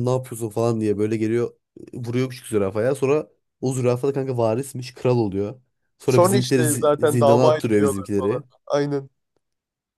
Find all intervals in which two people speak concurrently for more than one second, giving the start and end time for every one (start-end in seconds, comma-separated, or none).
6.0-8.4